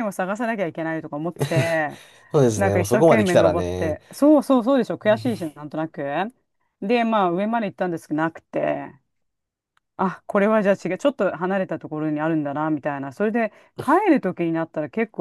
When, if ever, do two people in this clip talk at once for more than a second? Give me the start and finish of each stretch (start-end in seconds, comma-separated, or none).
2.6-4.0